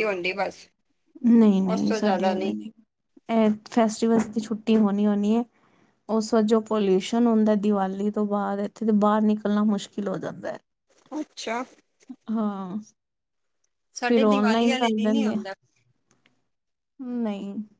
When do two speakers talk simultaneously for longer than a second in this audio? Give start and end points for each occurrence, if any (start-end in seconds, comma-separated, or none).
14.1-15.4